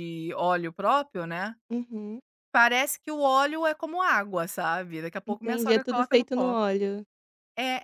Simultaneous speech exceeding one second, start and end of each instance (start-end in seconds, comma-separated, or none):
5.2-6.6